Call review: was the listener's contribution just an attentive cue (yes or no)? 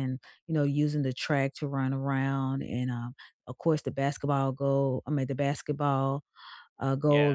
yes